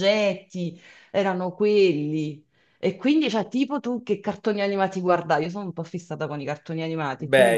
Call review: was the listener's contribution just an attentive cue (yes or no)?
no